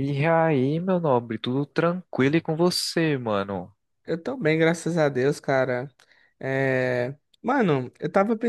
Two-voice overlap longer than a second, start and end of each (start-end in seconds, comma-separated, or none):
none